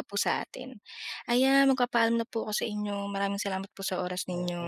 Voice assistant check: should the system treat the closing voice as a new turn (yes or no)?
yes